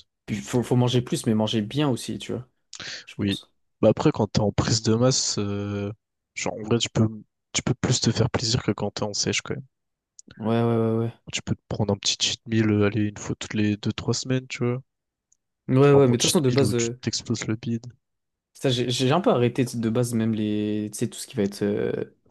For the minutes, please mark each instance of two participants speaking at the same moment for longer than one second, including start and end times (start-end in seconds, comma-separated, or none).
15.8-17.0